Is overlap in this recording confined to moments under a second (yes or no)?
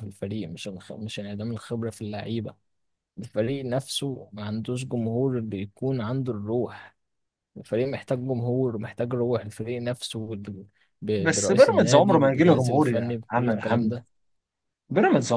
no